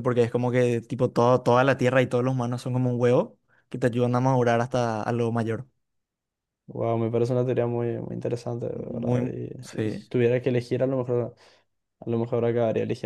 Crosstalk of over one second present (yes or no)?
yes